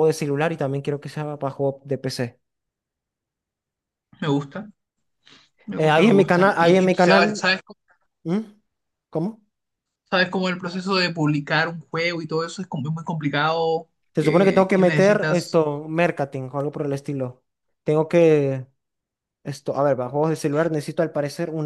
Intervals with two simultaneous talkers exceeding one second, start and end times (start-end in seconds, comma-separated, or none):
5.8-7.4, 14.1-15.6